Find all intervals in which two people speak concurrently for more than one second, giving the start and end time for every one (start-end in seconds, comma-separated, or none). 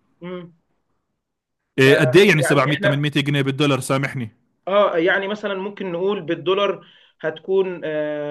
1.8-3.0